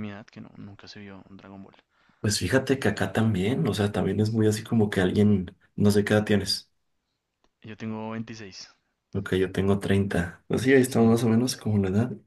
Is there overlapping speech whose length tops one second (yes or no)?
no